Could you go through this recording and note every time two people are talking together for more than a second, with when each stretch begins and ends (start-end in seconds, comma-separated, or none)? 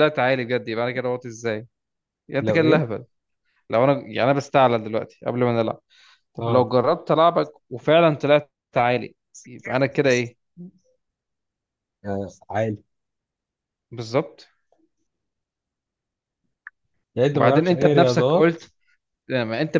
17.3-18.6